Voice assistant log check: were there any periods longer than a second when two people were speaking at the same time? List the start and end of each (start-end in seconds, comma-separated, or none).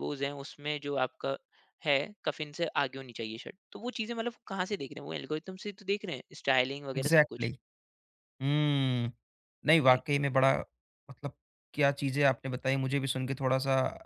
none